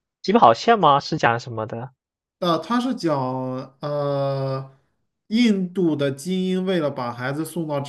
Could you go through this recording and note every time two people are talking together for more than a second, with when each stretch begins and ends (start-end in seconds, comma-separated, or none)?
none